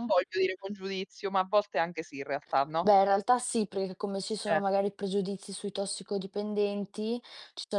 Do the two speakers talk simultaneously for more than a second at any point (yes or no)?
no